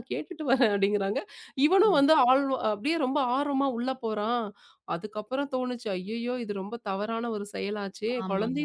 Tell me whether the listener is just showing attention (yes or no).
yes